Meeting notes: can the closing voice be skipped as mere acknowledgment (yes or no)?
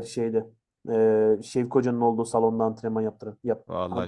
no